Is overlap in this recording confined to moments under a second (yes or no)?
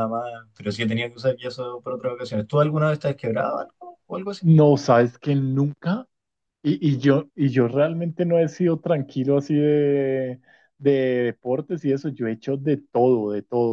yes